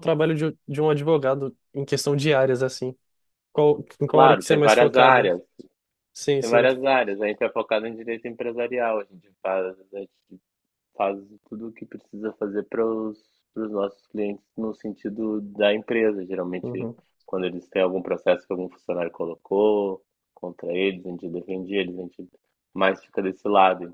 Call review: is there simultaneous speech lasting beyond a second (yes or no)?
yes